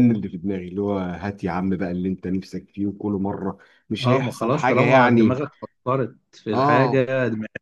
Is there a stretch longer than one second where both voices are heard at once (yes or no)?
yes